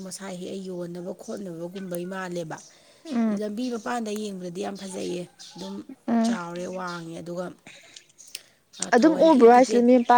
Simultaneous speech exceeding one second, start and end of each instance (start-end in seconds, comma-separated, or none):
none